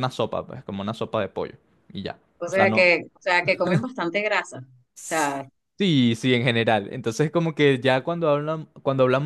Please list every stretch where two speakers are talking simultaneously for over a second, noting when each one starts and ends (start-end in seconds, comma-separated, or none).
none